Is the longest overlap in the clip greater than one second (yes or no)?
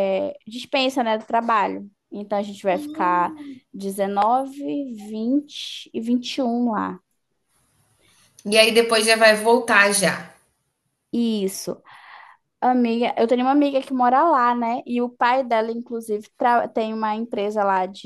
no